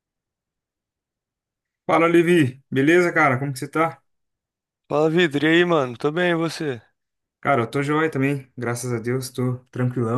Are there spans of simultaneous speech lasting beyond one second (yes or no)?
no